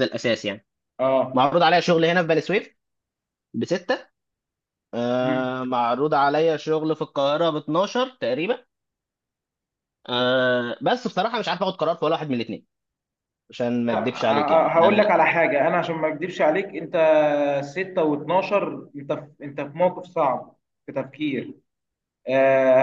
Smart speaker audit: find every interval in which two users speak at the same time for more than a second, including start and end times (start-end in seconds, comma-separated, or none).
13.9-15.1